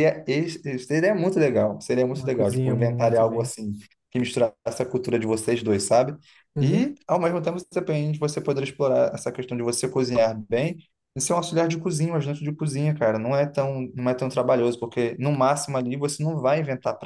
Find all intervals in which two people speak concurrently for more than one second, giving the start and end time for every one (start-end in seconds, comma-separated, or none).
2.1-3.5